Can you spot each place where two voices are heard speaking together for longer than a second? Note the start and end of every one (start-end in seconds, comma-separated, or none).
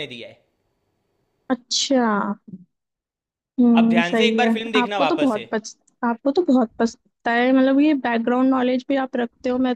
3.8-5.4